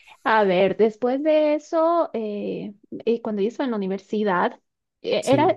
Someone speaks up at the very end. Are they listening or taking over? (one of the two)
listening